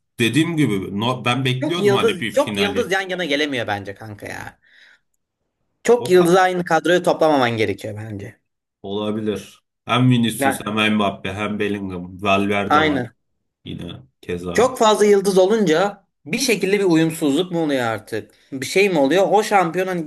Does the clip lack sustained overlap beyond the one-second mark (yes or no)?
no